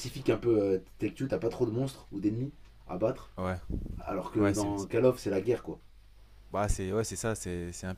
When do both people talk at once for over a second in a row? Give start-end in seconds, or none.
none